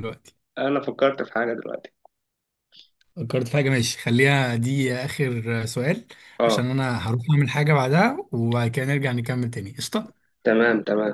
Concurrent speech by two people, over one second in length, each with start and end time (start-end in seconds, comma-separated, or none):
none